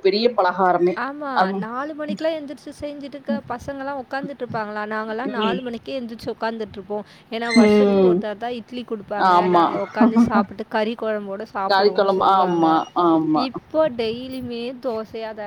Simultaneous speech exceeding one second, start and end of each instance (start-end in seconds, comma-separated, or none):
none